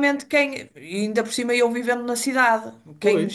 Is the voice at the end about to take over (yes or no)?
no